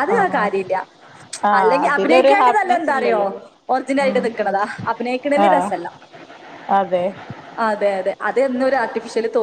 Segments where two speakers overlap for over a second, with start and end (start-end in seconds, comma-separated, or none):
1.6-3.2